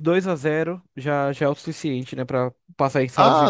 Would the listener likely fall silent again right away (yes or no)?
no